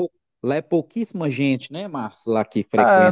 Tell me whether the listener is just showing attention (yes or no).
no